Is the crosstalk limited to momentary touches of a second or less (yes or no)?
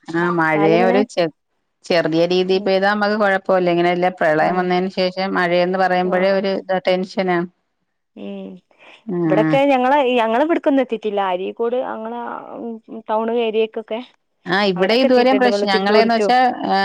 no